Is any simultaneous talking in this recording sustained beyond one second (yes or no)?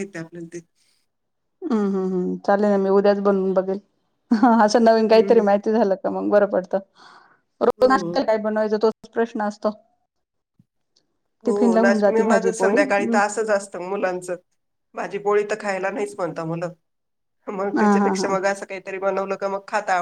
yes